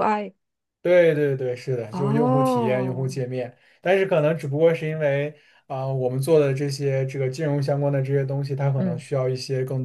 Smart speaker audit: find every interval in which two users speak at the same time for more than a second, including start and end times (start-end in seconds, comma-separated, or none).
1.9-3.2